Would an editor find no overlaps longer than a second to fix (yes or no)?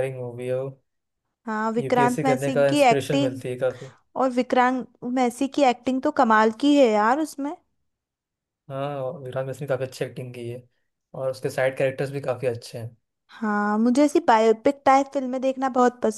no